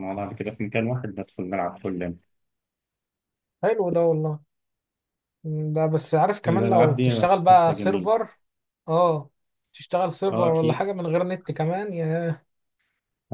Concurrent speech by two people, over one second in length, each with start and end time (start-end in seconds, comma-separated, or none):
6.5-8.1